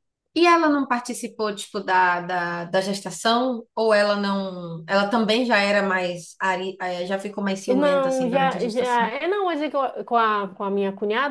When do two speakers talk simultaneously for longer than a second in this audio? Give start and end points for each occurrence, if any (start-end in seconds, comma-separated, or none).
7.7-9.1